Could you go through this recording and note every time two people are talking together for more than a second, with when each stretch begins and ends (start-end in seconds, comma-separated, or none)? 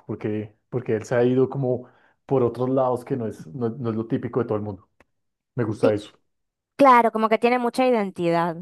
none